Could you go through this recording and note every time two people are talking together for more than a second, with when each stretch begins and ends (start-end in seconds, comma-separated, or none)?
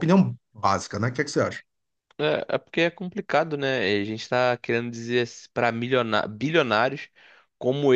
none